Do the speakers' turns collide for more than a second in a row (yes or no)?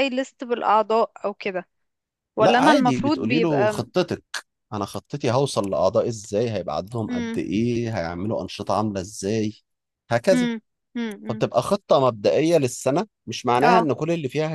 yes